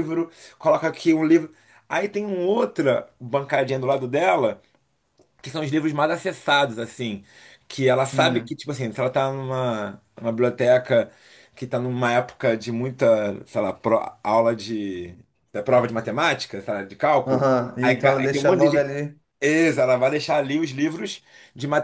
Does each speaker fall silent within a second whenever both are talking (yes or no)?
no